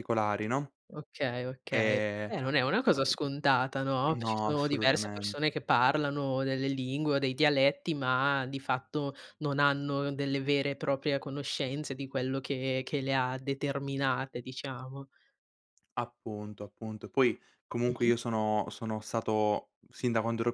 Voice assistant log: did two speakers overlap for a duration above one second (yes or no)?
yes